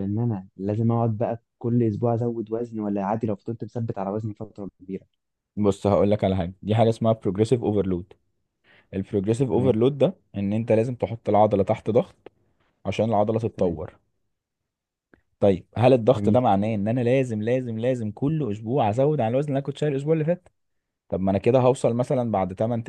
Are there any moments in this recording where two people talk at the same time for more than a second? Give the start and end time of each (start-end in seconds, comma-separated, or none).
none